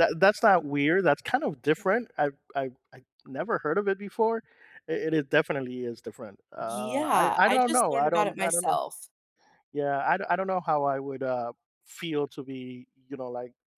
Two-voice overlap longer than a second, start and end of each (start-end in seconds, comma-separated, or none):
6.6-8.8